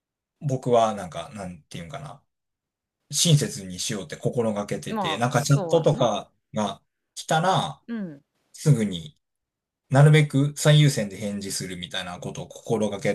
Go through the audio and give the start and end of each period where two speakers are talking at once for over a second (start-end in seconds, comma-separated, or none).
4.9-6.1